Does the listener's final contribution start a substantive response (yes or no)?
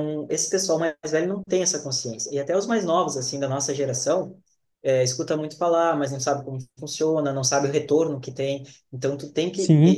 no